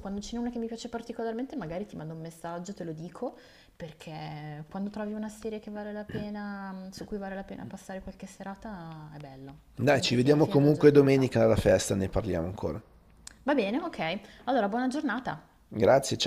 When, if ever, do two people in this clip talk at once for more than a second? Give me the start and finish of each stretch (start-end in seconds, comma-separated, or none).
9.8-11.3